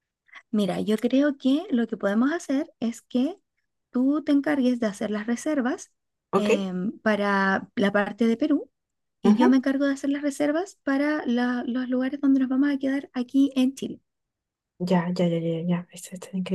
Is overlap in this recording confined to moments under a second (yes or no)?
yes